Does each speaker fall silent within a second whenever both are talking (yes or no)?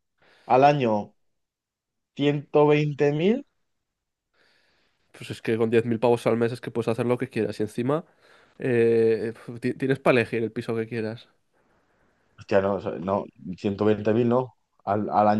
yes